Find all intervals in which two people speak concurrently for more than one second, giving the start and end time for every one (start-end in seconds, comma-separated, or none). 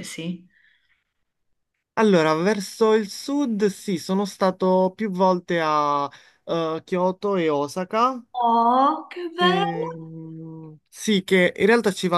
none